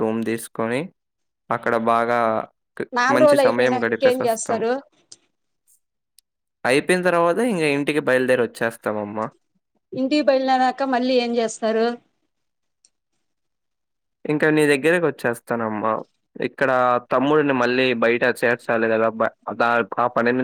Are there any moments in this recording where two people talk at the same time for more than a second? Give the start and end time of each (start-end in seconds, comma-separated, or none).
3.0-4.6